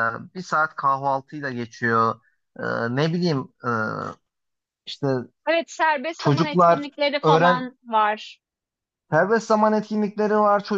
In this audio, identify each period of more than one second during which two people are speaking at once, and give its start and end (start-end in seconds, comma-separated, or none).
6.2-7.7